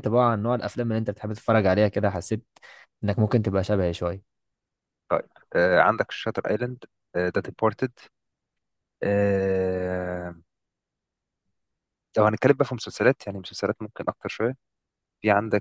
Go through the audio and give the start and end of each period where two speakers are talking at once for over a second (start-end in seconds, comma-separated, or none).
none